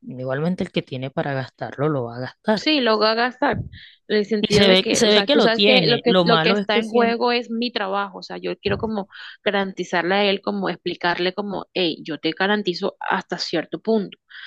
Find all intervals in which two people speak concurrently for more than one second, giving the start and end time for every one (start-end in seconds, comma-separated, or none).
4.4-7.4